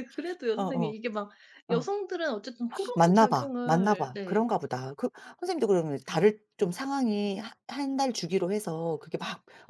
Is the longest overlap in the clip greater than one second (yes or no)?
yes